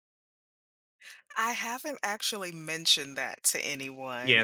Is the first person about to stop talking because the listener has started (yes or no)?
yes